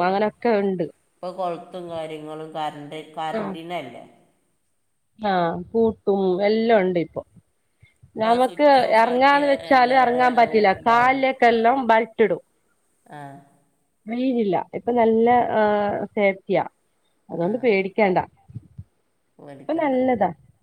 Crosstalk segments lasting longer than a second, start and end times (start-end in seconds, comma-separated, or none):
8.2-10.4